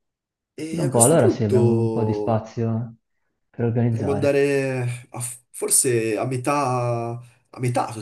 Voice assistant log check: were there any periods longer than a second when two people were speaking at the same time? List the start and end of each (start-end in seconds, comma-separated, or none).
0.7-2.5